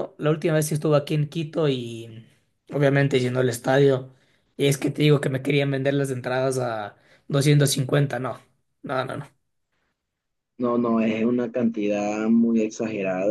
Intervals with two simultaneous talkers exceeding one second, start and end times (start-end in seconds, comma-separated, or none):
none